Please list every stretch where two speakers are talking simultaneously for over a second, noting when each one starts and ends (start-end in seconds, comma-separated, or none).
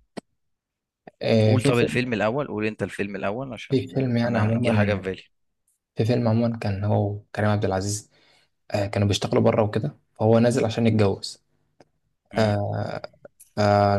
3.7-5.0